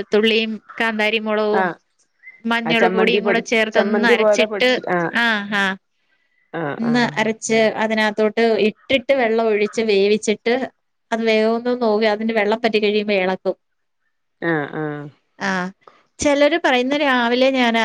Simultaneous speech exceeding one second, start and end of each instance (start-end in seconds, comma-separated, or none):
2.7-4.7